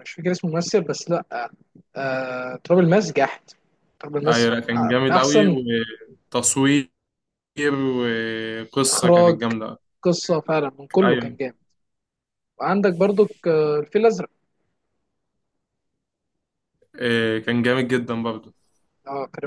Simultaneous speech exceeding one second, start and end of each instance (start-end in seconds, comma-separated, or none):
4.3-5.6